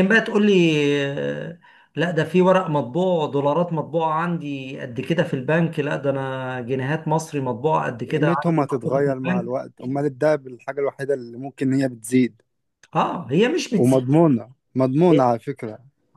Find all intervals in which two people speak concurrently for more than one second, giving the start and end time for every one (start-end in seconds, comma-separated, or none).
8.1-9.6